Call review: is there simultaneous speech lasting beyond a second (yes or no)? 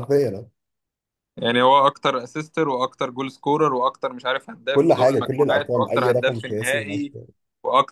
yes